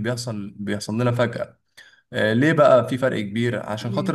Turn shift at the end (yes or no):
no